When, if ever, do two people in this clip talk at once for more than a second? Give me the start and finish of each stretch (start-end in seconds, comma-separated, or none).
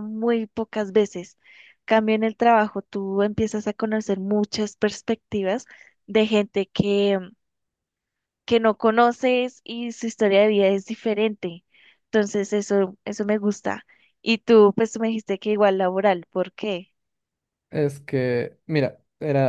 none